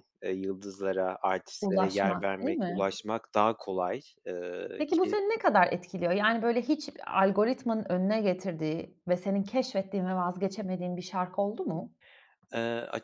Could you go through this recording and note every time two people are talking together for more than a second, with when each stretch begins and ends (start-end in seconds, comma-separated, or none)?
1.6-2.8